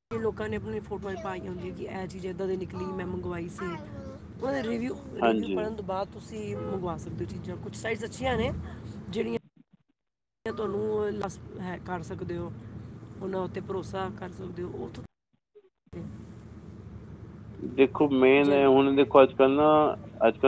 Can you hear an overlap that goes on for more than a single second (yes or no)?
no